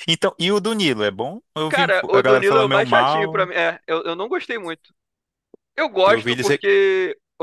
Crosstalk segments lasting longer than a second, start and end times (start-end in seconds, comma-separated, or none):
1.7-3.5